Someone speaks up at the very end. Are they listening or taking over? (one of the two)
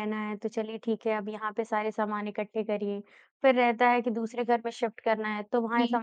listening